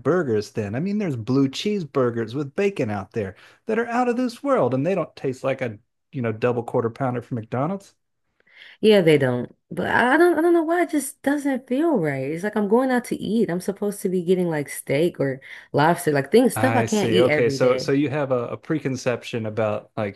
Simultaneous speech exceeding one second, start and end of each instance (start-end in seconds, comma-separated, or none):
16.6-17.9